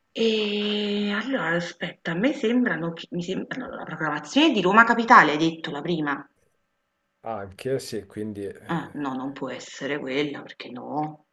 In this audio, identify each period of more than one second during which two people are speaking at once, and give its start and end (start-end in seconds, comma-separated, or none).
none